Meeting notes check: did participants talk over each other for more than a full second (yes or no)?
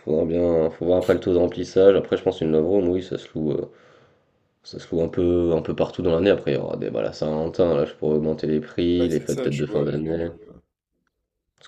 yes